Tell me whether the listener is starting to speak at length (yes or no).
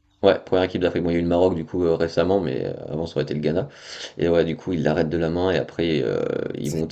yes